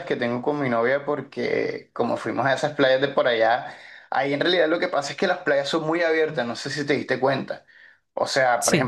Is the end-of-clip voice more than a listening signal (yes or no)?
no